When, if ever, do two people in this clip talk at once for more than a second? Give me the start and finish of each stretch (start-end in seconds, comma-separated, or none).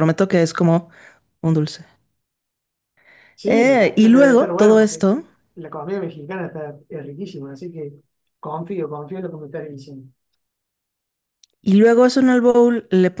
3.5-5.1